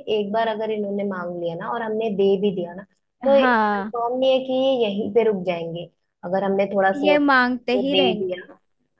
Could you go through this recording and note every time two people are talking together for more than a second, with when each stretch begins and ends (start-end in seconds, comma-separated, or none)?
6.9-8.3